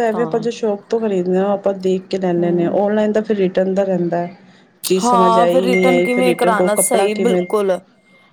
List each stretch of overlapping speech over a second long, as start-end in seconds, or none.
5.0-7.5